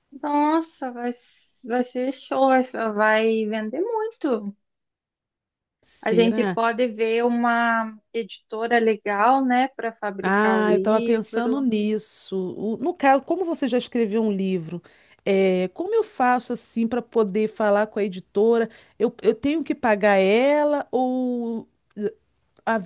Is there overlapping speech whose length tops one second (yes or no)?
yes